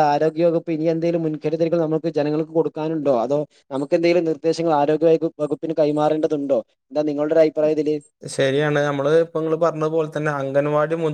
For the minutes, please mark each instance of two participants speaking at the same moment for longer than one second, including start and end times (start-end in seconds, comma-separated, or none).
none